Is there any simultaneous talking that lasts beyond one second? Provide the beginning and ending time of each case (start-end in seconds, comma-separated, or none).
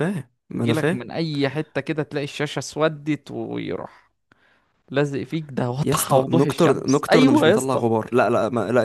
5.8-7.8